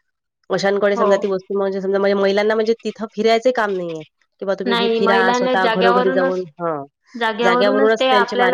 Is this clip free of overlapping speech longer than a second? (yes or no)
no